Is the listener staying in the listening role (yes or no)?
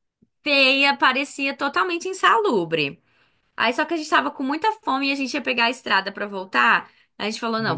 yes